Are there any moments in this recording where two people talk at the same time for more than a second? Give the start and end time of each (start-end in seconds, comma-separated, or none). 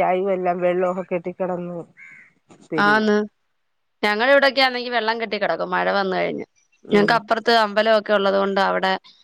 none